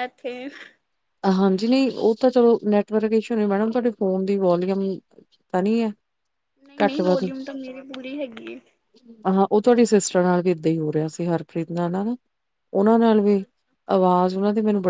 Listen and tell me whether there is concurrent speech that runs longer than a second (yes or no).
no